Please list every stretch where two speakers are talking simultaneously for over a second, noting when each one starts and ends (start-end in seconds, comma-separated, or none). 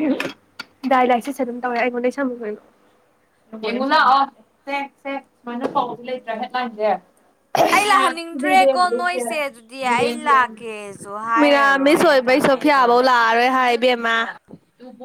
11.4-13.0